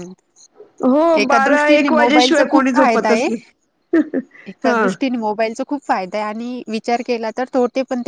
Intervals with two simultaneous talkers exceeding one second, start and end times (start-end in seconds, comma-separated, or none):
1.2-3.3